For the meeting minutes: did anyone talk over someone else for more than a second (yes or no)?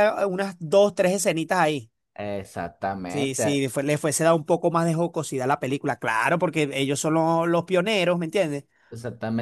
no